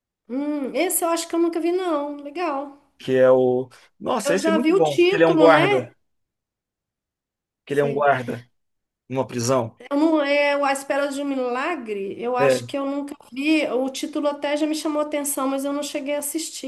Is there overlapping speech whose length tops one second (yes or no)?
yes